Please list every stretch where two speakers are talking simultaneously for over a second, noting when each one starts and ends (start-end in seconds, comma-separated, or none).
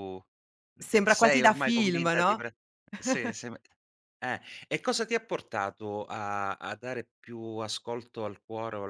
0.8-2.4